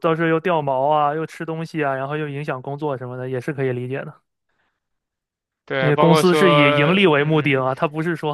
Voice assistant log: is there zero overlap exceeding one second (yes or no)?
no